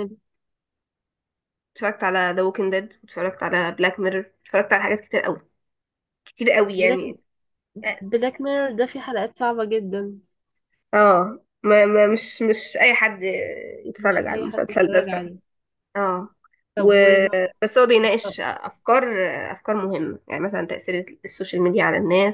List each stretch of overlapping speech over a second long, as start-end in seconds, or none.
14.0-15.3